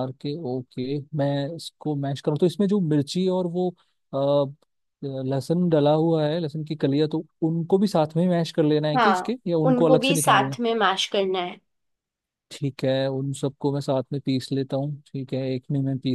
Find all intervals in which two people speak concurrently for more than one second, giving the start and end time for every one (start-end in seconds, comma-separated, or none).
9.0-10.6